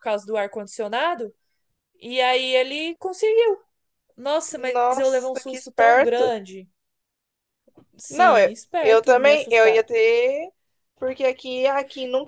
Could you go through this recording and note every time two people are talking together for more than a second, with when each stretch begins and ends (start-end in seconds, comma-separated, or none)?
4.5-6.3, 8.1-9.9